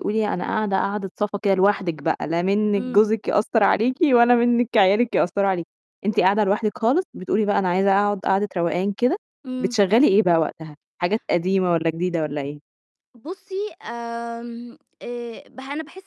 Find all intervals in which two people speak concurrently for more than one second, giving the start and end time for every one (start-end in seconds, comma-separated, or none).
none